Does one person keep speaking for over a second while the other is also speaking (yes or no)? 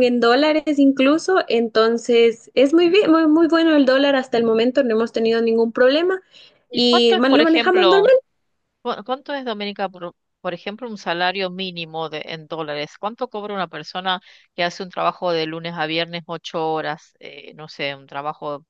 yes